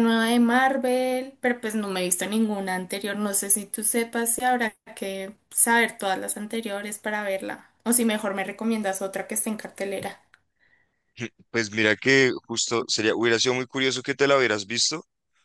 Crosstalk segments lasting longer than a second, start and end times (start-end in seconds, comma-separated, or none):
none